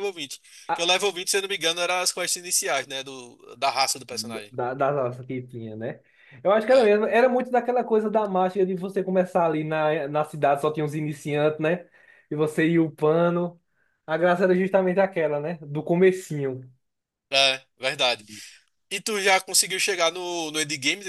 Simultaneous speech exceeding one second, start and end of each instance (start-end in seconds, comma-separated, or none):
none